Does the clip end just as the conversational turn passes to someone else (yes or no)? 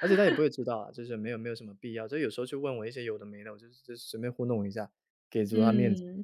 yes